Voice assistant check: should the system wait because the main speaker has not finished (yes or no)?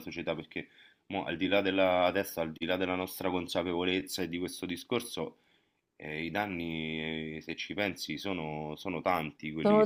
no